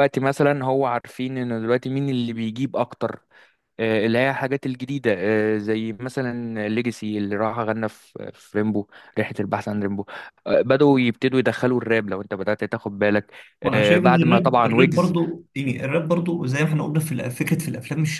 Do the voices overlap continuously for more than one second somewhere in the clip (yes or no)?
yes